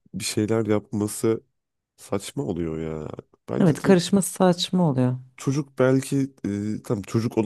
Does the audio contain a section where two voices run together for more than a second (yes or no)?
no